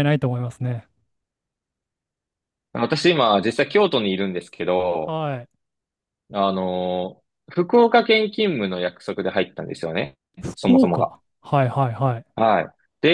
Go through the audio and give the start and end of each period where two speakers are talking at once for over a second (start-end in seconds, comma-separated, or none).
none